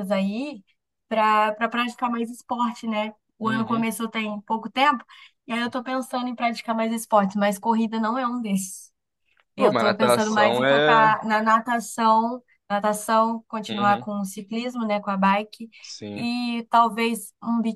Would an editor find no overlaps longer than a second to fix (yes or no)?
no